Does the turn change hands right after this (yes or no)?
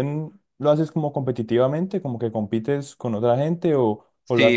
yes